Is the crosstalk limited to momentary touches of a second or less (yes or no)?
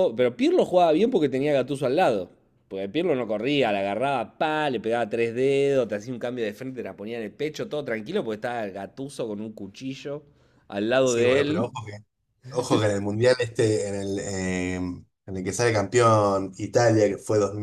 yes